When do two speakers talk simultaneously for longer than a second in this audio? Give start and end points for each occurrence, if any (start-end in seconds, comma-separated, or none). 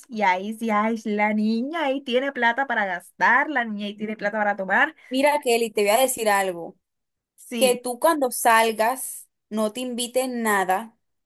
none